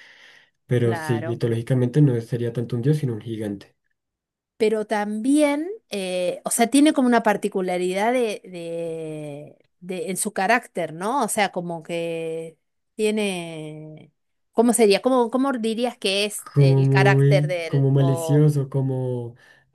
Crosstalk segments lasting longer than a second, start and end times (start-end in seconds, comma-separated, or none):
16.5-18.5